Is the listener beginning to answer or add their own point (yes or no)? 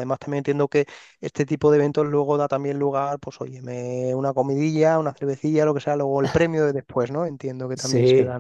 yes